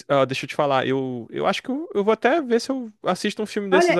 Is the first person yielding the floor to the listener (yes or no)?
yes